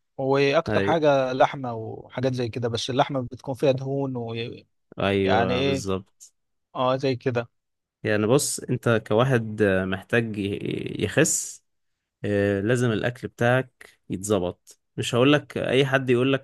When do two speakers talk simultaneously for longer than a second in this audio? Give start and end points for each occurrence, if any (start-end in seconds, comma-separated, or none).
none